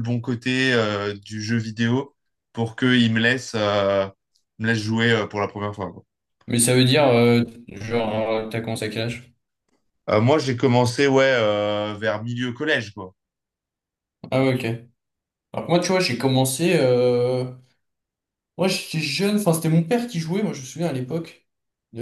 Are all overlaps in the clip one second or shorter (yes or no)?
yes